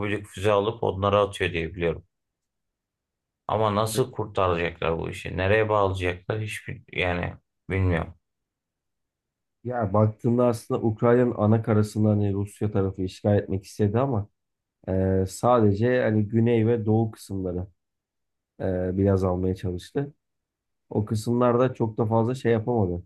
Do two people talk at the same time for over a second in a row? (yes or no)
no